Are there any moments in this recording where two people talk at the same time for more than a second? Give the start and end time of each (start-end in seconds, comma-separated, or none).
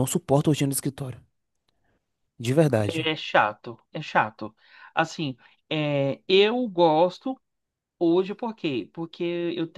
none